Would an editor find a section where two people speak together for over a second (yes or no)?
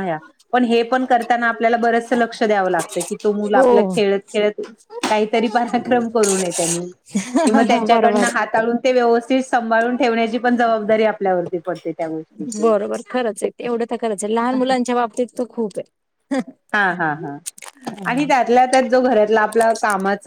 no